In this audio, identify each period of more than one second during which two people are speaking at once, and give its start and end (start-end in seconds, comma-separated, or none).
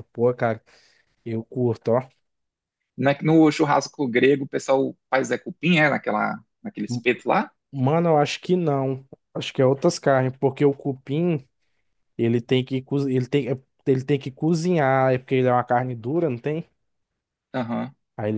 none